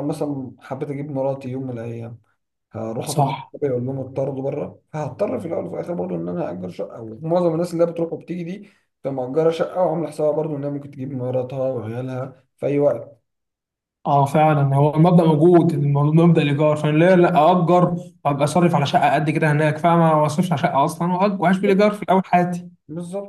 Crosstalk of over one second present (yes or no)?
no